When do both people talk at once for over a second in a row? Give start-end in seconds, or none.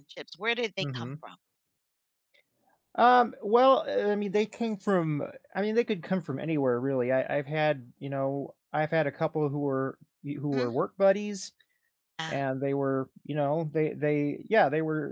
none